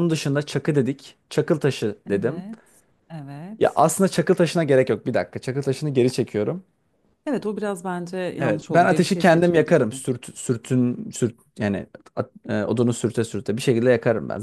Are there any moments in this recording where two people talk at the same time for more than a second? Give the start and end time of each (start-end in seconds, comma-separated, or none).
8.4-10.0